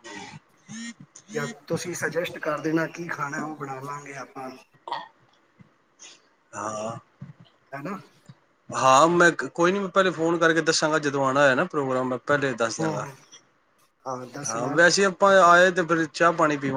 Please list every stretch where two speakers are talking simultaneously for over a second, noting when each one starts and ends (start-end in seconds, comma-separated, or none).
none